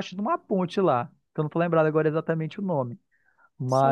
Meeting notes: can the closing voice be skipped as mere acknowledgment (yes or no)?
no